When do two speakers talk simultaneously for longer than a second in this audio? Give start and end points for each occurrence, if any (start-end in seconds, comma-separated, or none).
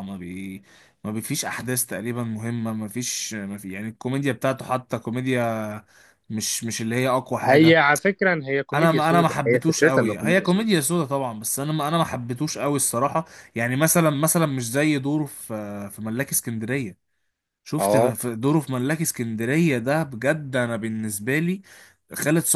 8.7-10.9